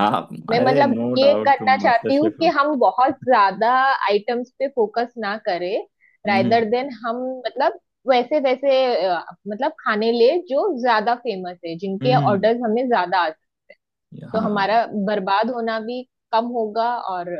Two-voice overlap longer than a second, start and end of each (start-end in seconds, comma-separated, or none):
0.6-2.5